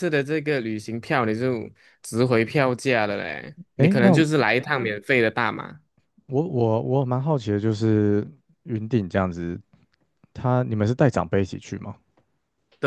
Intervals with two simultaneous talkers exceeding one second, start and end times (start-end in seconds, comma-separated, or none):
none